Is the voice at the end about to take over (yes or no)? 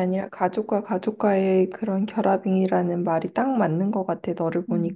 yes